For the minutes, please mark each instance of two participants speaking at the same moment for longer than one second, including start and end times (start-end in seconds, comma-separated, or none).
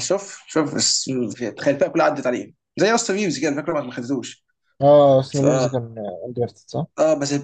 none